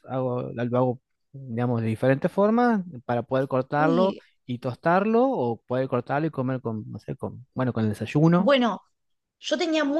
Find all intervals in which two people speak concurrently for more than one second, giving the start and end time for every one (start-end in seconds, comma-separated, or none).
none